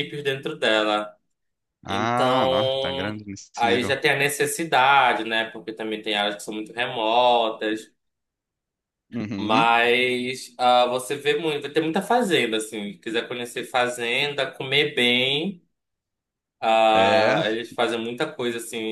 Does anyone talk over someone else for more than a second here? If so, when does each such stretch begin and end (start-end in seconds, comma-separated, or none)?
1.9-4.0